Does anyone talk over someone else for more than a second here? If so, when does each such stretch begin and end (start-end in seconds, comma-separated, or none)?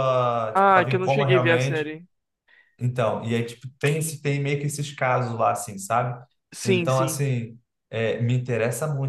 0.5-1.9